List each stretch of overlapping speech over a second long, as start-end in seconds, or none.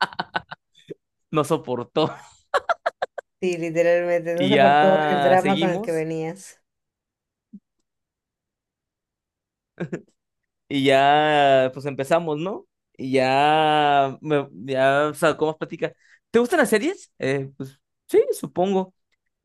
4.3-6.1